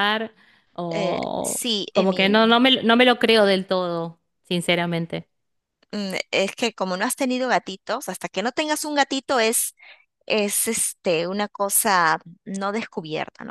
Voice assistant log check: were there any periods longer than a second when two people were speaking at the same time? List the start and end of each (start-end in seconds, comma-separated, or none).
0.9-2.5